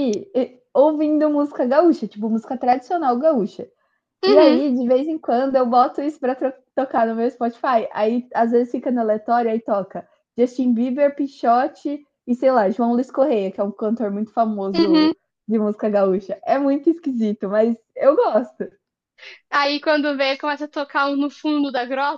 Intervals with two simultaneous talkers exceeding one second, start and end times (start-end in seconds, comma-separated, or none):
none